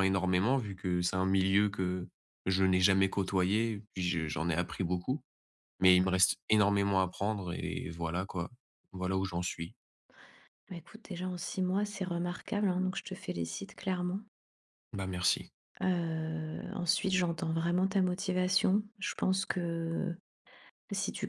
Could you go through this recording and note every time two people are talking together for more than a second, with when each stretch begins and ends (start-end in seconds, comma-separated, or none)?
none